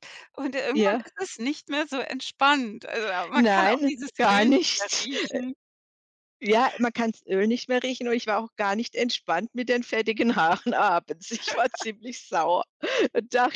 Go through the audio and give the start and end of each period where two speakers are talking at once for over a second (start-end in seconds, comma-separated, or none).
3.3-5.1